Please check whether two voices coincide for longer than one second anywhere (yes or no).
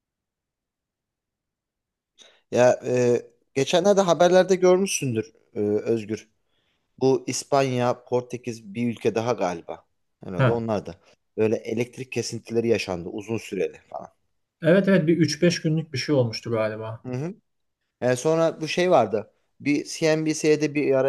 no